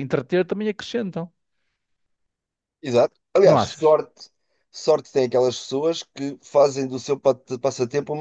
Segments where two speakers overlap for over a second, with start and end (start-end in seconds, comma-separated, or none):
none